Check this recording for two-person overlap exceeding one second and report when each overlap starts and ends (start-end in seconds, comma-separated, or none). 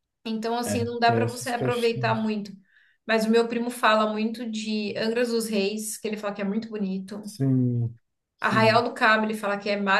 0.6-2.3